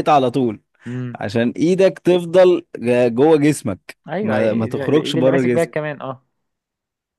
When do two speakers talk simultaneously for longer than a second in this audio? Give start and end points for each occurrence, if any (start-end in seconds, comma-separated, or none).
4.1-5.8